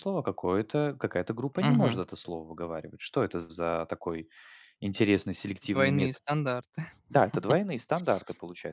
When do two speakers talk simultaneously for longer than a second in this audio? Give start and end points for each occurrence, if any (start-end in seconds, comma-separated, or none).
none